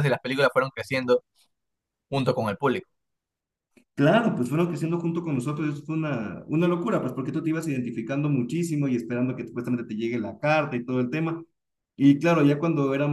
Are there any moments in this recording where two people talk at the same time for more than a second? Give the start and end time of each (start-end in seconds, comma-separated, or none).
none